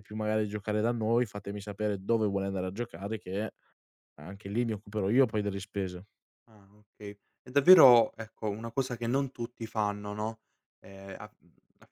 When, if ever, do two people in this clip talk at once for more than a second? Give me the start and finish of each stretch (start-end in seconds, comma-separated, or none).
none